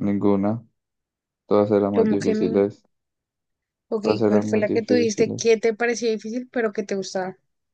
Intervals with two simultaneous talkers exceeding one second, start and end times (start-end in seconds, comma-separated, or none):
4.0-5.6